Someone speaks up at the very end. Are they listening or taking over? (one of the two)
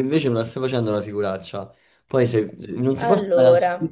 listening